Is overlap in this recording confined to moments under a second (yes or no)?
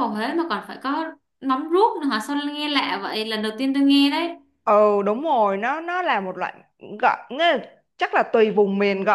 yes